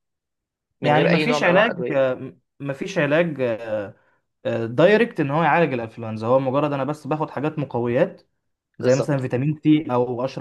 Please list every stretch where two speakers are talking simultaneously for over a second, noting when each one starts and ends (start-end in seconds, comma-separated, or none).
0.8-2.1